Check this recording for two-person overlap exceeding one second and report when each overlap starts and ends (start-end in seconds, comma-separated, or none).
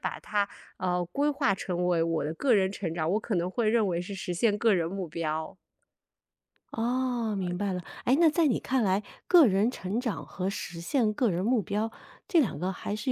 none